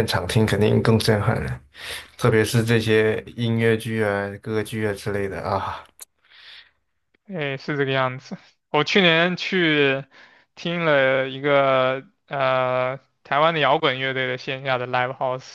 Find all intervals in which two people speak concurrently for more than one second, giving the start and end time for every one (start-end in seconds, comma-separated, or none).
none